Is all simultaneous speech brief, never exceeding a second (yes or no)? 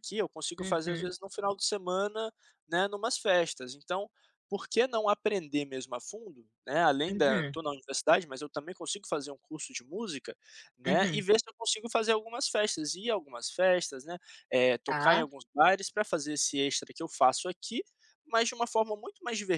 yes